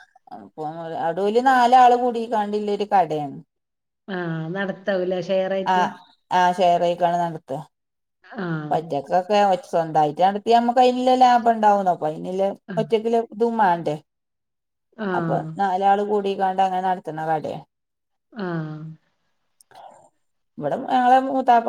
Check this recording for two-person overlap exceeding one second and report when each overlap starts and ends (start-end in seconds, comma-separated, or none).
none